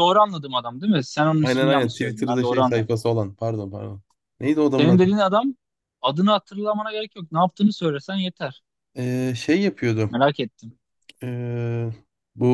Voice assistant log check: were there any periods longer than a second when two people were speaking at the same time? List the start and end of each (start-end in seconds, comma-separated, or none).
1.4-3.0